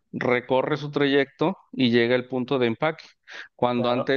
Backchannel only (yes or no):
yes